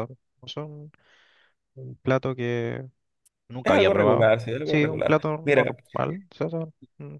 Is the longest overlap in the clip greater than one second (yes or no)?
yes